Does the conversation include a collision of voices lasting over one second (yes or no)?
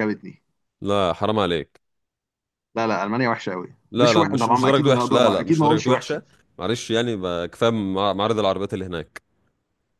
yes